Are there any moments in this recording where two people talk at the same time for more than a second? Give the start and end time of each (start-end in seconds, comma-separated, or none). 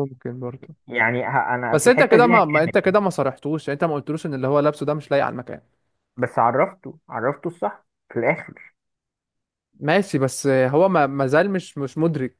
1.7-2.9